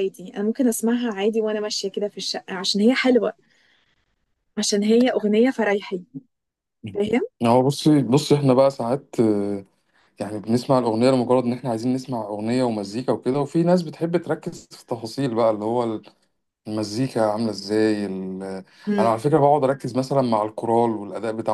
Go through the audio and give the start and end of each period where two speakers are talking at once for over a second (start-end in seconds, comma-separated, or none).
none